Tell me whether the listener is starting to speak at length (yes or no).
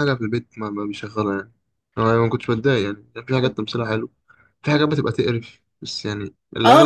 yes